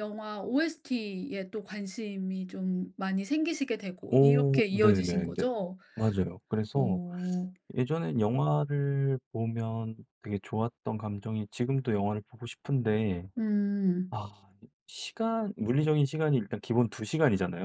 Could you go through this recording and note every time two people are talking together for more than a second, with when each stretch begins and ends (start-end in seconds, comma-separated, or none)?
4.1-5.4